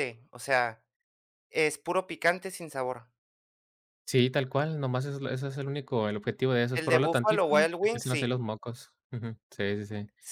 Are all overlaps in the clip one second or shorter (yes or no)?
no